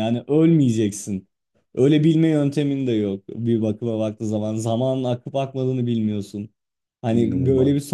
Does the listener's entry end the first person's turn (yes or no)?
no